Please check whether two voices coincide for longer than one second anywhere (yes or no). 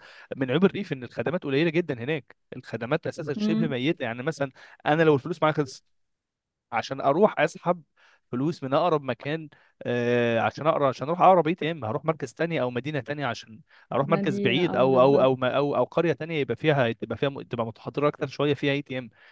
yes